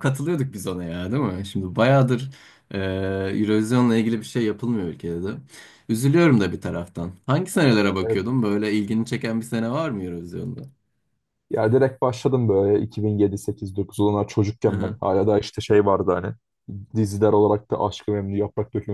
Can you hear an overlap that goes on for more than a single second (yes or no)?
no